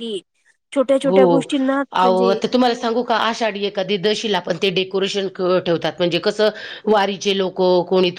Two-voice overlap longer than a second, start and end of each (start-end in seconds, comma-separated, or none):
none